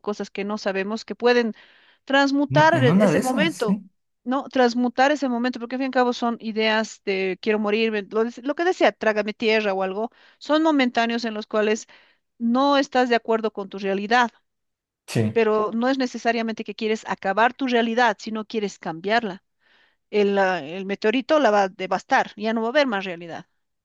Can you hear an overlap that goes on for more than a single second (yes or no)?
yes